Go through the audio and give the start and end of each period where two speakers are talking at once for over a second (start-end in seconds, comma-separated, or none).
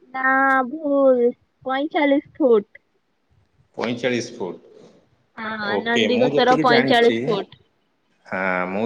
5.4-7.2